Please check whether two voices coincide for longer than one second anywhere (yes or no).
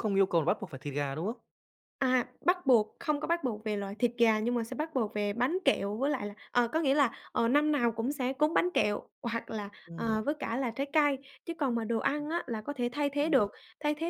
no